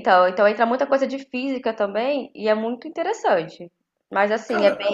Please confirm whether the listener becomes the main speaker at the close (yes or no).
no